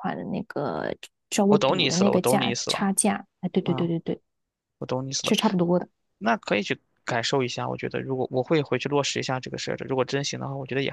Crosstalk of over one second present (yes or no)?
yes